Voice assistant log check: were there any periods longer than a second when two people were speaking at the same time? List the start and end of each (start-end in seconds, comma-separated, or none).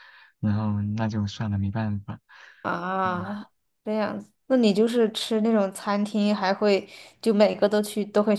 none